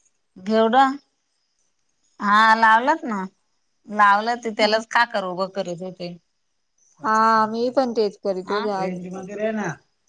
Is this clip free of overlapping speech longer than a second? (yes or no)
no